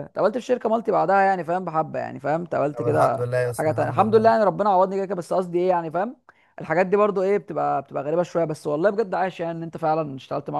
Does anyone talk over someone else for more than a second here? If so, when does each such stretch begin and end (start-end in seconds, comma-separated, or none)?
2.7-4.3